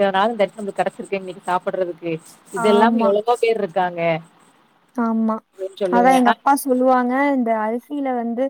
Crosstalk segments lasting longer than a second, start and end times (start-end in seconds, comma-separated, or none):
none